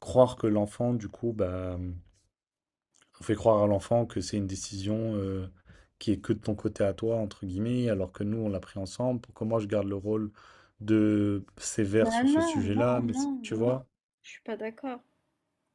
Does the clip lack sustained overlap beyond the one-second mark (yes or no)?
no